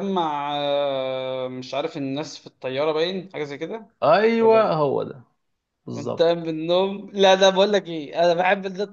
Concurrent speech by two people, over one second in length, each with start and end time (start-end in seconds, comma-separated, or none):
none